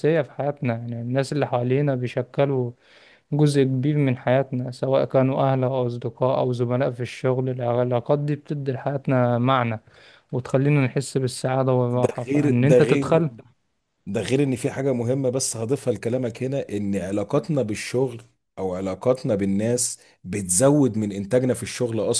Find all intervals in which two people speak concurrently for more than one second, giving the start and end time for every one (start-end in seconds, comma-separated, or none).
11.9-13.2